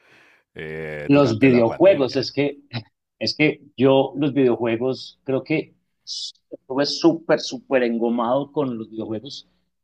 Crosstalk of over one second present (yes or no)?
yes